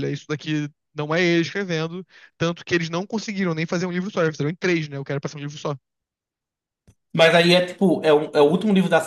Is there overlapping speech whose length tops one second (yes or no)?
no